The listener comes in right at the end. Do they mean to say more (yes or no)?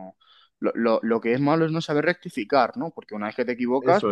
no